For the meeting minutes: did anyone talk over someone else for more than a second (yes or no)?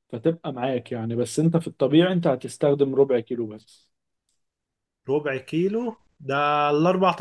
no